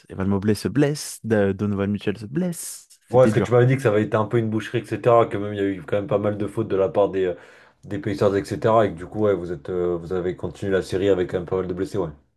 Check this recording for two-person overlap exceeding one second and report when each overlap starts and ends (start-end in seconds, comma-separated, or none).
none